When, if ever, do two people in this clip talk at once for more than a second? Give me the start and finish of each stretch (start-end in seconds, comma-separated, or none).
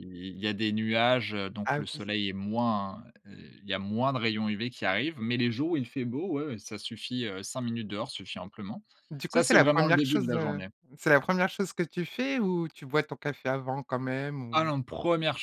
9.3-10.7